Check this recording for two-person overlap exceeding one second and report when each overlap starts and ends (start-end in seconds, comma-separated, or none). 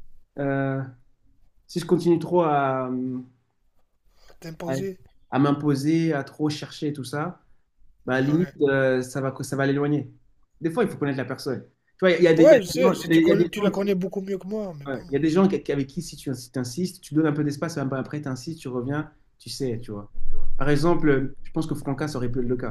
12.4-14.0